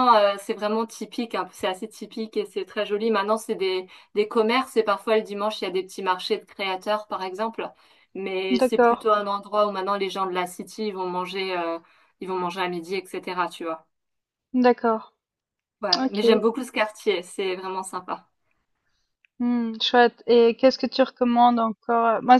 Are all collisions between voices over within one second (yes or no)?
yes